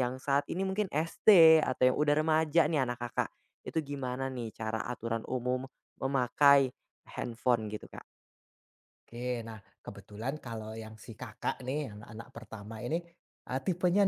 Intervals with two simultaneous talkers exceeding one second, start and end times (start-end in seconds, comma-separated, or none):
none